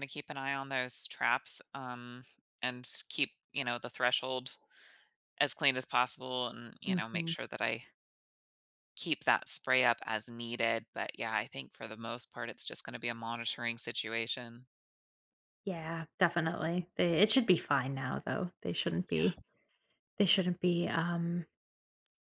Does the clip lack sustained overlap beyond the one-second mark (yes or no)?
yes